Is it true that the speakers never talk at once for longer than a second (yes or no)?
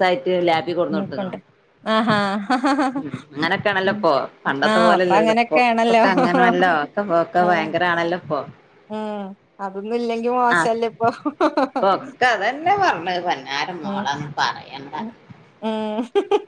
no